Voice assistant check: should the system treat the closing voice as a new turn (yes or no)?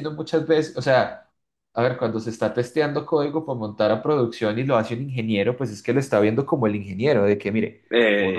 no